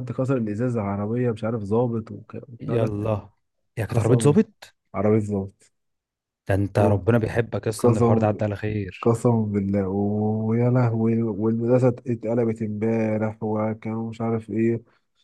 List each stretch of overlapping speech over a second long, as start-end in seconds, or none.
none